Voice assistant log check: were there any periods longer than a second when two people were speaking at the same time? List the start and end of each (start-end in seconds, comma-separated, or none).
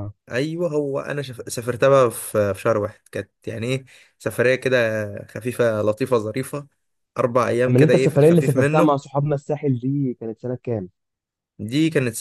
7.7-8.9